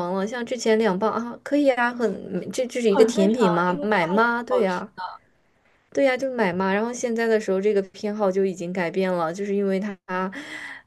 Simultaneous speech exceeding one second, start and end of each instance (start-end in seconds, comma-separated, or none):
2.9-4.8